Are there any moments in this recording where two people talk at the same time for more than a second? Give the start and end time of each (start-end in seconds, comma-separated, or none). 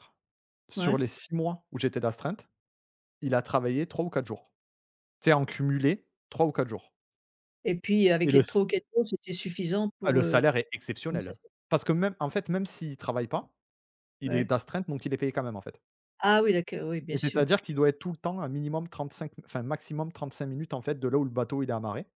none